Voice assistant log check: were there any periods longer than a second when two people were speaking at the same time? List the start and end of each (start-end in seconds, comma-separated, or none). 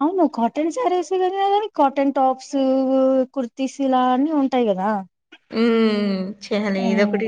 none